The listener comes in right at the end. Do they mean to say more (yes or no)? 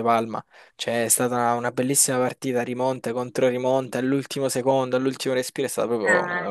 no